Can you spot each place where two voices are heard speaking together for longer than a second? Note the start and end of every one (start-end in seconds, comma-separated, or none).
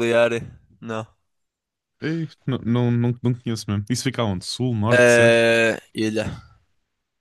none